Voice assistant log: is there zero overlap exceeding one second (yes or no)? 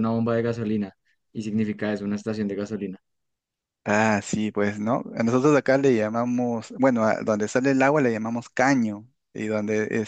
yes